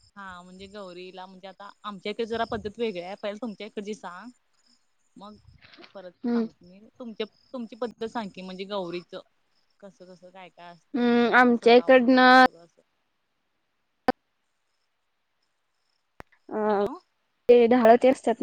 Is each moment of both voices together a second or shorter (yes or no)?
no